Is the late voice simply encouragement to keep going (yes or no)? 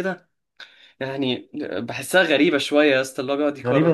no